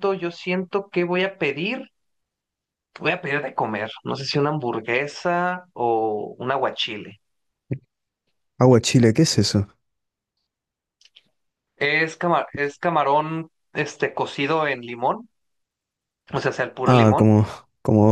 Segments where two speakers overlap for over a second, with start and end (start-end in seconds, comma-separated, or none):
none